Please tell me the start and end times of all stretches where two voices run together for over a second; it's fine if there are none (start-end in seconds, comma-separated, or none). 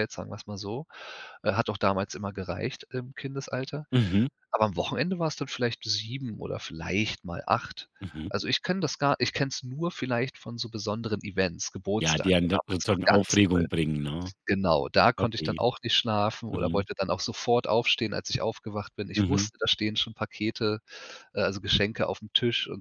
12.0-13.7